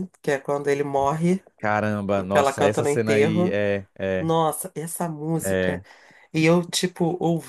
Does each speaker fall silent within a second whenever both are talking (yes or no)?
no